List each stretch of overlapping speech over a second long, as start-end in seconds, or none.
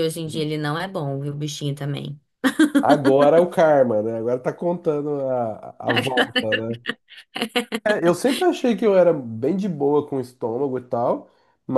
none